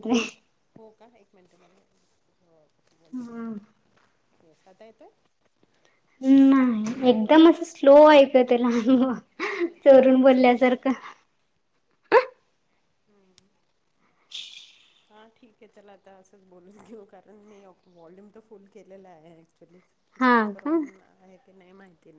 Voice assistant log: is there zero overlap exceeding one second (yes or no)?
yes